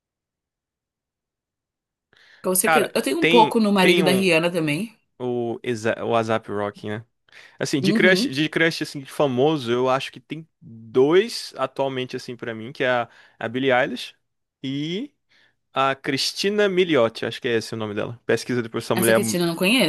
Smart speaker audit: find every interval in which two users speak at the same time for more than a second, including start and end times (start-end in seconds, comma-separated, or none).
2.6-4.3